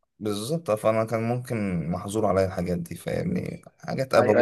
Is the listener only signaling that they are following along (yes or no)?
no